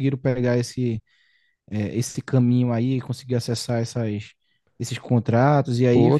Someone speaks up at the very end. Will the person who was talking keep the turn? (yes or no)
no